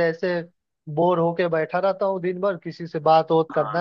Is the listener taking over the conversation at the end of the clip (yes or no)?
no